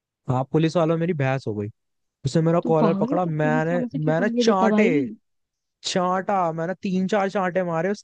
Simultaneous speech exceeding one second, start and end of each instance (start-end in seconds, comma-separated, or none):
2.6-4.8